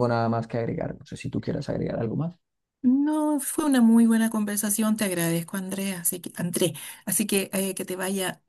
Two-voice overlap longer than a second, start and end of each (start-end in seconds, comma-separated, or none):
none